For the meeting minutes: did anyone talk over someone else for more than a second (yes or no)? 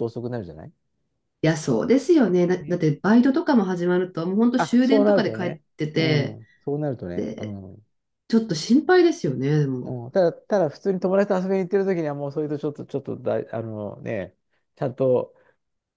yes